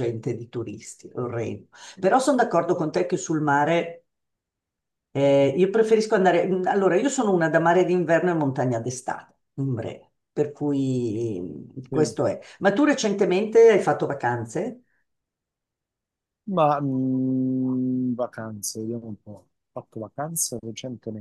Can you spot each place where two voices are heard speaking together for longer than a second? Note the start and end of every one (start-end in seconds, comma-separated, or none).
none